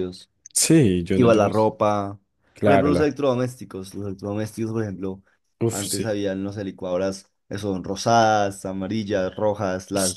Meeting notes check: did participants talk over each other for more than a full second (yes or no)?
no